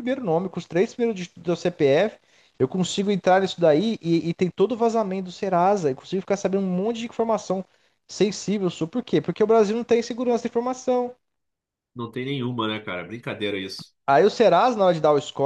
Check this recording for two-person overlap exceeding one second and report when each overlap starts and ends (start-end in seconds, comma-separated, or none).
none